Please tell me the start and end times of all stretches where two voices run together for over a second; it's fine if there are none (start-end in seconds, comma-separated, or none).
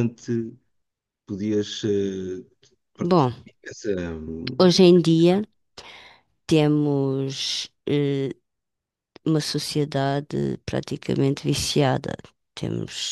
none